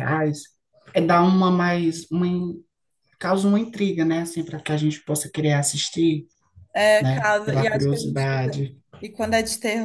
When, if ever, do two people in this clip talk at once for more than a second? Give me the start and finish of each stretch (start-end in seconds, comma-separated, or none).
7.0-8.6